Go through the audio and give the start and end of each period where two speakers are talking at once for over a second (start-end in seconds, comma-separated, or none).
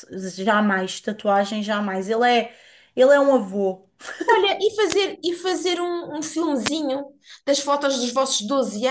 none